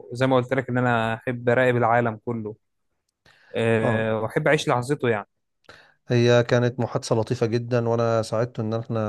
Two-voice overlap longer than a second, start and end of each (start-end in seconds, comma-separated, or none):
none